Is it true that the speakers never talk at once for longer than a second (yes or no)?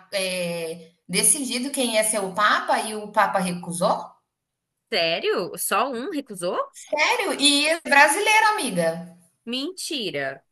yes